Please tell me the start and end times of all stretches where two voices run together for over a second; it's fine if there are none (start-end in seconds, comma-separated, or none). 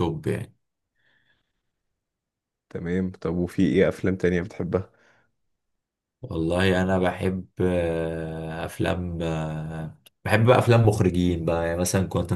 none